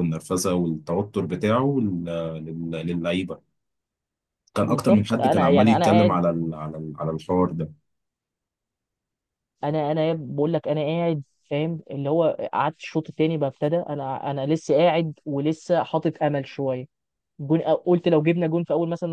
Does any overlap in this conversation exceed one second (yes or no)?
yes